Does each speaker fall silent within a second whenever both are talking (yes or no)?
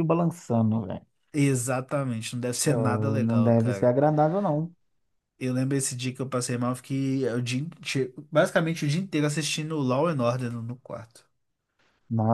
no